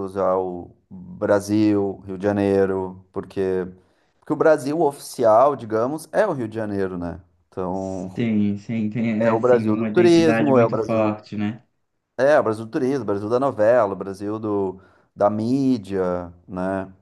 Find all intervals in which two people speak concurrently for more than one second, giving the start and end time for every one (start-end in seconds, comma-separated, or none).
9.2-11.2